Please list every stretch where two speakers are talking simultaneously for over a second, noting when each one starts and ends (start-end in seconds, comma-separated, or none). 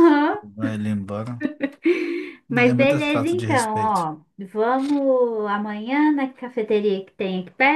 2.5-4.0